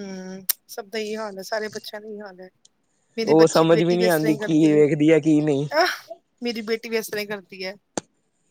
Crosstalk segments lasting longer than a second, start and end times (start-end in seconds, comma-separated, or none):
3.2-4.8